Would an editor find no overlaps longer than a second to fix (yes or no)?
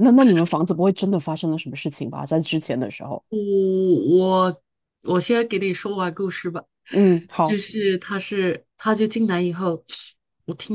yes